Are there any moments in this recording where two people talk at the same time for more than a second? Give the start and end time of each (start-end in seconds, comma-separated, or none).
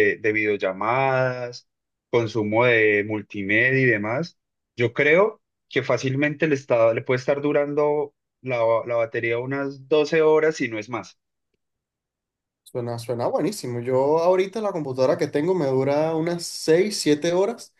none